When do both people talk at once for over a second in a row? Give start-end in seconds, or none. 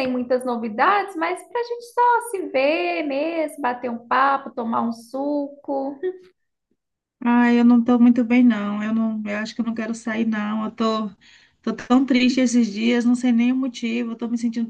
none